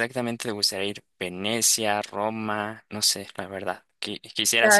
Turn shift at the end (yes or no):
no